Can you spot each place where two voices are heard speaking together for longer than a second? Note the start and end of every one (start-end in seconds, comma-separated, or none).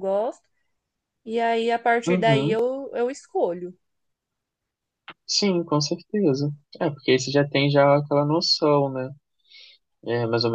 none